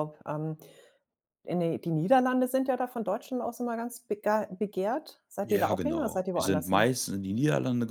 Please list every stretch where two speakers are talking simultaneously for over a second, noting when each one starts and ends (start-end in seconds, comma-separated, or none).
5.4-6.9